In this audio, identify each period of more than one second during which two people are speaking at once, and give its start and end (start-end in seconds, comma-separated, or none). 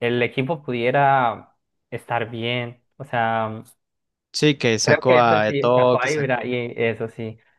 4.8-6.5